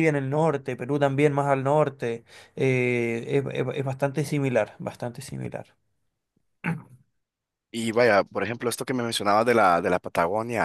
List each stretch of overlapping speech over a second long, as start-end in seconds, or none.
none